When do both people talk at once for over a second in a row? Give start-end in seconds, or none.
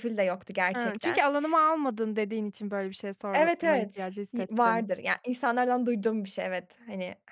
3.3-4.8